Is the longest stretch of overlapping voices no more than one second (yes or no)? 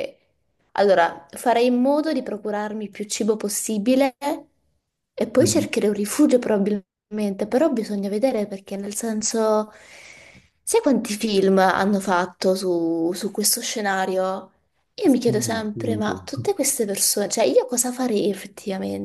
no